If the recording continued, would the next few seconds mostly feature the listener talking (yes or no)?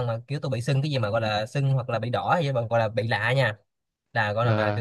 no